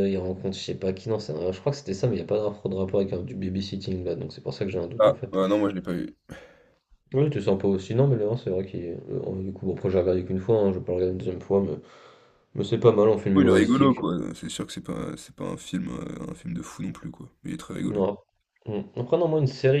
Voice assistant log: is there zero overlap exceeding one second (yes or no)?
yes